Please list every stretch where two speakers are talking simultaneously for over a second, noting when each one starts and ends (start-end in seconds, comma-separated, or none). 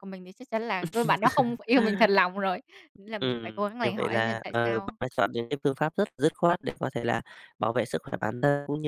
3.2-5.0